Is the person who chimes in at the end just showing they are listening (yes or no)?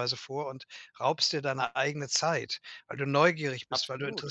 yes